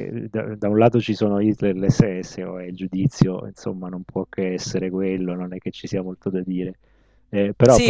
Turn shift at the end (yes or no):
yes